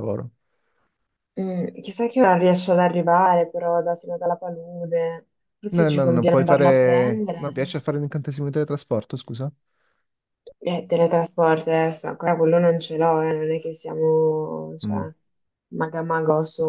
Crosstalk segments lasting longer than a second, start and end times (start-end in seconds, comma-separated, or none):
5.7-7.5